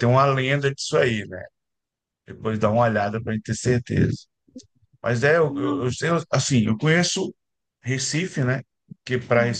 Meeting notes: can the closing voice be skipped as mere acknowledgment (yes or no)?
yes